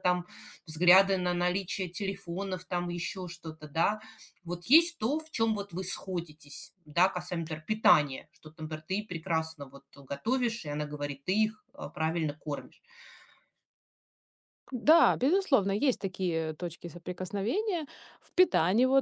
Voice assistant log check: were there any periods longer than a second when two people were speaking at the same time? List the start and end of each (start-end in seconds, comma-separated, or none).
none